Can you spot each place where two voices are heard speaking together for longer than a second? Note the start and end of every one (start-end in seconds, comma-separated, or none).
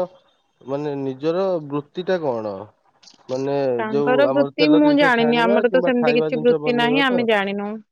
4.0-7.2